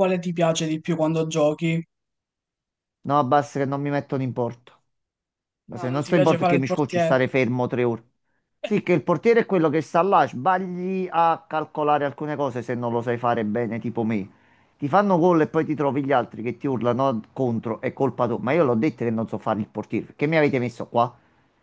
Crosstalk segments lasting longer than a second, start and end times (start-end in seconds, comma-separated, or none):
5.7-7.2